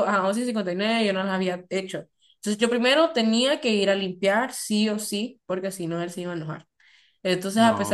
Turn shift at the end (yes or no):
no